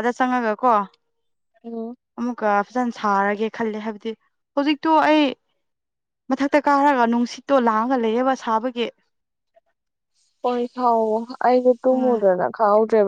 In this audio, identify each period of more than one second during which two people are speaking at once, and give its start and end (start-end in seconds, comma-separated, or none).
none